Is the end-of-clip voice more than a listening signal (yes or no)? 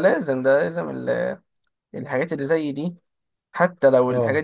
no